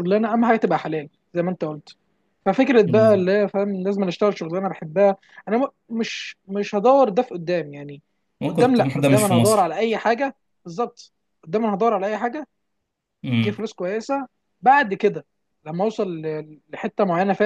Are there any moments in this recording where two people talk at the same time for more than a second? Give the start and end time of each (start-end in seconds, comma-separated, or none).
8.5-9.7